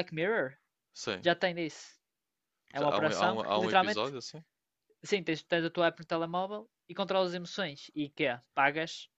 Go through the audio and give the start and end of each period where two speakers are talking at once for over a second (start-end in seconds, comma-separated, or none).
2.8-4.1